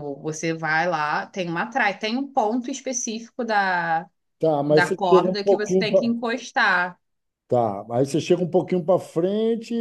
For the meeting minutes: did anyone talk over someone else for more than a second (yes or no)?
yes